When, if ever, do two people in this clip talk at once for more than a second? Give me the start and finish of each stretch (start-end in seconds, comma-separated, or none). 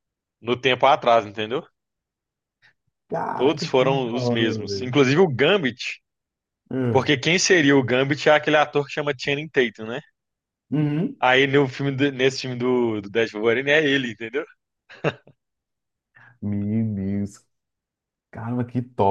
3.3-5.0